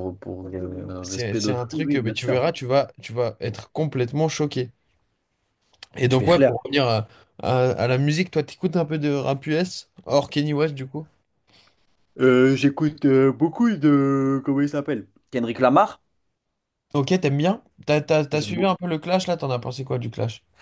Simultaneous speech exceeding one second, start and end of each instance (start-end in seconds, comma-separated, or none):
1.0-2.4